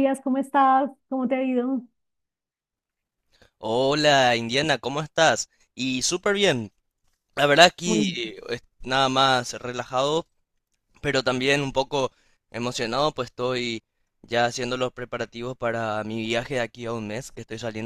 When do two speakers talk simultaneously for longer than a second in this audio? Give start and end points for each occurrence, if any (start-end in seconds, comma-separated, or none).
none